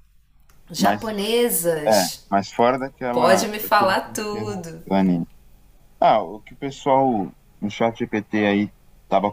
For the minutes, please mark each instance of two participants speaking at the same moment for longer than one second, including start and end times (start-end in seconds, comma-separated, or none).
3.1-4.8